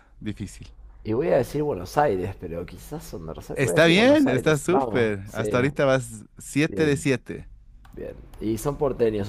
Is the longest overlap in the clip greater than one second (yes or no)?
yes